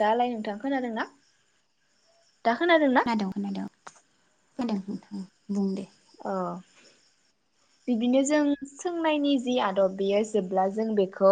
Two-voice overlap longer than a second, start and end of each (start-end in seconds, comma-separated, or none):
none